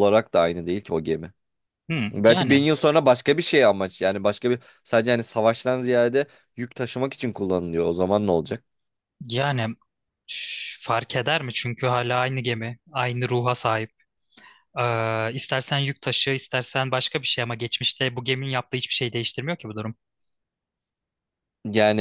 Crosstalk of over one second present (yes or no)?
no